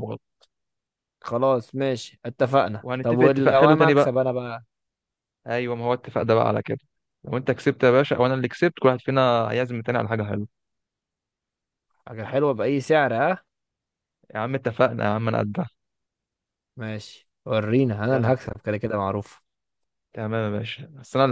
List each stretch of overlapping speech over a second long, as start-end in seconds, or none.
2.8-4.1